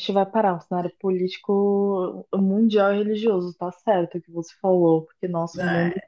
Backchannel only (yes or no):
yes